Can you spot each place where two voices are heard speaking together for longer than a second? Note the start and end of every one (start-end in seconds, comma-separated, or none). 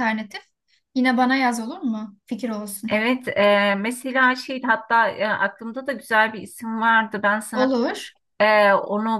none